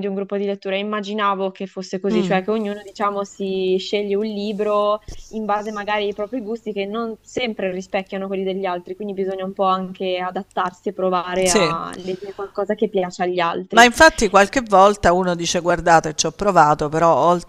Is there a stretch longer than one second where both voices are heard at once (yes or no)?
no